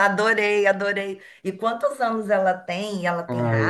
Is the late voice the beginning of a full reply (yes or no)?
yes